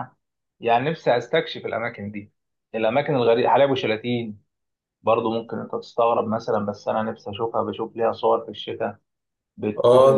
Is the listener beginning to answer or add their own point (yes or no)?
yes